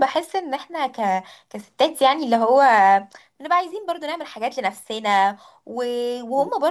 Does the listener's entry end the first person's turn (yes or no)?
no